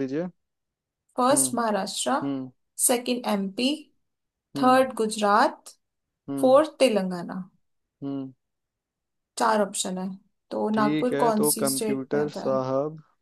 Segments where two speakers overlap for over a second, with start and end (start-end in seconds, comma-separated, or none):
10.7-12.6